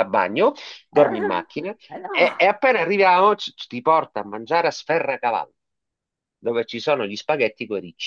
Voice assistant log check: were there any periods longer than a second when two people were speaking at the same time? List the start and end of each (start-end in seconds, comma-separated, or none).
0.9-2.5